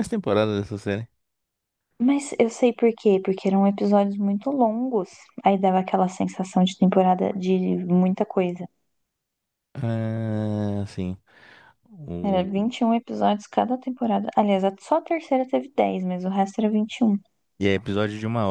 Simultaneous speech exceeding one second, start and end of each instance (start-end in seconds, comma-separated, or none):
none